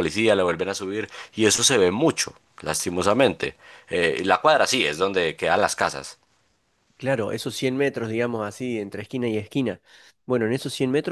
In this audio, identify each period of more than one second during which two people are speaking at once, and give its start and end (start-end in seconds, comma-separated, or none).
none